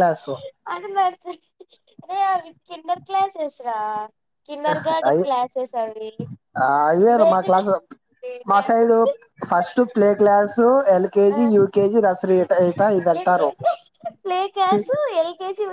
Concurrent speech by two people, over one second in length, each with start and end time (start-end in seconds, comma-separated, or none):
none